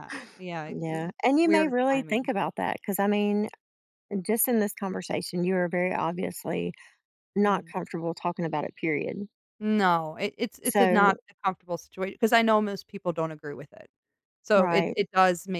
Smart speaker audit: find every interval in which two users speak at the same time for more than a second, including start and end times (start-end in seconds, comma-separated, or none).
0.7-2.3